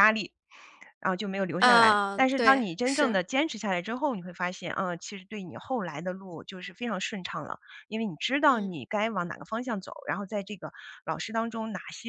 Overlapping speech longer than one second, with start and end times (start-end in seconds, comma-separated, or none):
1.6-3.2